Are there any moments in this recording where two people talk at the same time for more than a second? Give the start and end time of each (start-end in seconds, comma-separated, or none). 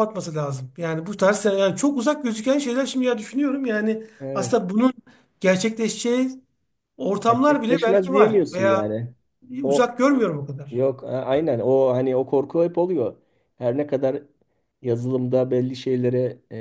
7.3-9.0